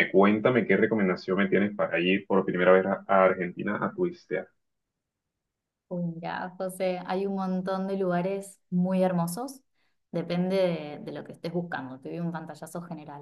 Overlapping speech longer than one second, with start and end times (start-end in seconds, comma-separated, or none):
none